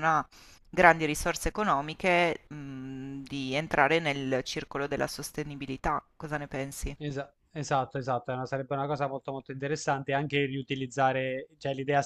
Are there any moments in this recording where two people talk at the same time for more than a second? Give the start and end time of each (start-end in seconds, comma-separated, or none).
none